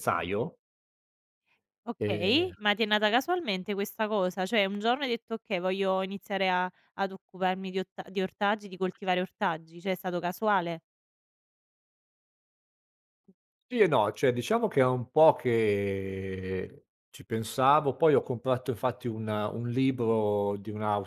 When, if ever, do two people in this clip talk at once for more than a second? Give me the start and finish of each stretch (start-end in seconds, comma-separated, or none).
none